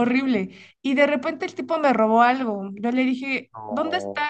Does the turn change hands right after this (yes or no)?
no